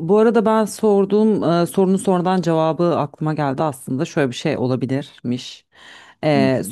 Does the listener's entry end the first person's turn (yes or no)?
no